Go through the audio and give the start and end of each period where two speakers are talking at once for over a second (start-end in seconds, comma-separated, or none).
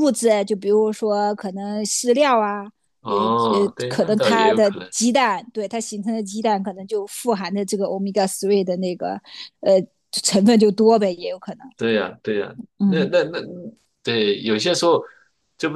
3.0-4.9